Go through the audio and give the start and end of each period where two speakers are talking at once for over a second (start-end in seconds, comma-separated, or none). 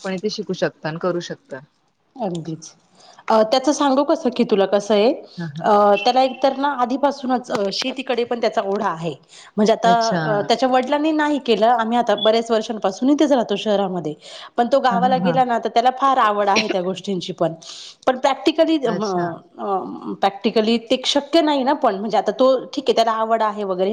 none